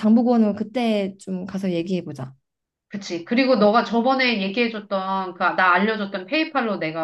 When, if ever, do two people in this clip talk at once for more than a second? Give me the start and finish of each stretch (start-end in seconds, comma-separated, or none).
none